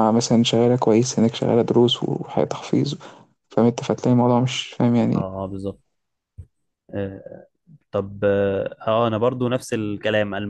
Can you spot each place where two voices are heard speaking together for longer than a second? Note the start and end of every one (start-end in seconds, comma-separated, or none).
none